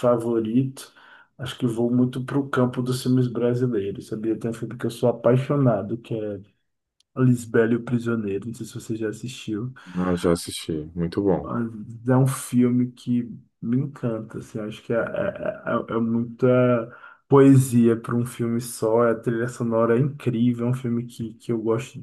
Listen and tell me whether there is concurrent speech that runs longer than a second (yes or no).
no